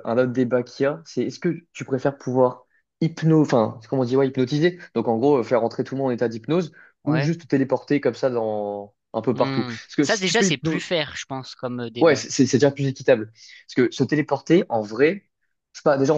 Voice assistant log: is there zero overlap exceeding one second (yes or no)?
no